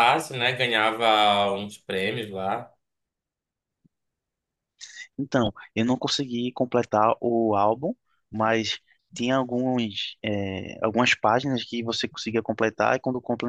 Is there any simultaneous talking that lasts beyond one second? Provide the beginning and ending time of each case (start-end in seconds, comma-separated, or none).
none